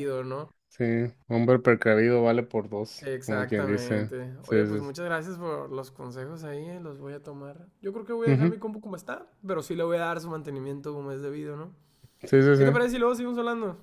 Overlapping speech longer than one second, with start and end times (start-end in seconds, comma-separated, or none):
3.0-4.9